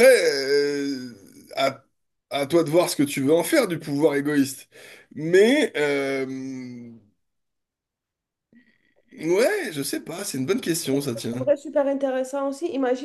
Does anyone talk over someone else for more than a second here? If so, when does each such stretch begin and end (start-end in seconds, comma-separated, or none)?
none